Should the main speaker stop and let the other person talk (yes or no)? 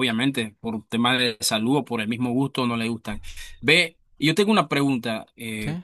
no